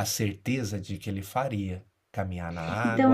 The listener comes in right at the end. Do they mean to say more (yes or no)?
yes